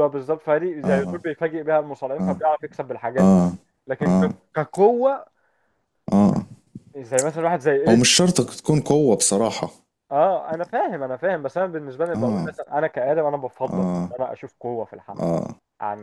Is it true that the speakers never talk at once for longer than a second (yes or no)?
yes